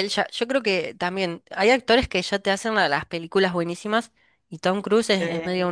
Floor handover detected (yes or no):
no